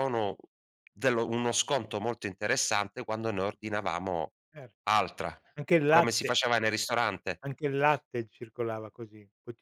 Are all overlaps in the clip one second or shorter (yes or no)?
yes